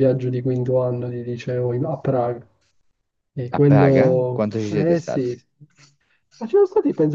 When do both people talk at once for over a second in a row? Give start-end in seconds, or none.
3.5-5.2